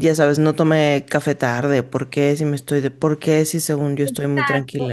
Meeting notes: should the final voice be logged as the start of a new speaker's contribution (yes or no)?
yes